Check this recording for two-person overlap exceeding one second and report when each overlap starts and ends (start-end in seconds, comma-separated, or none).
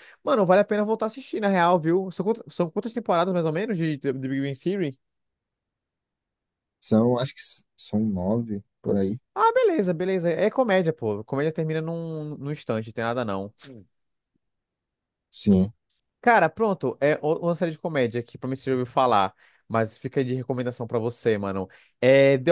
none